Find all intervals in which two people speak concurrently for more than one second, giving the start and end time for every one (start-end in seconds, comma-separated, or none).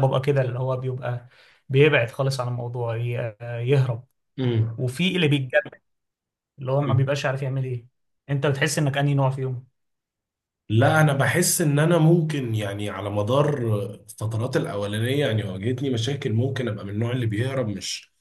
none